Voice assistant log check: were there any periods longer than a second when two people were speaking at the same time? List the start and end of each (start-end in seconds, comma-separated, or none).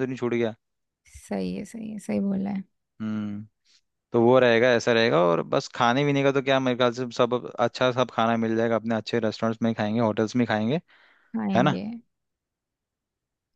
none